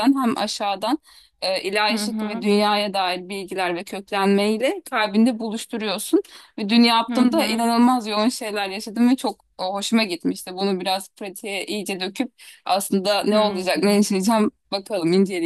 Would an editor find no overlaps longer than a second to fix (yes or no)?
yes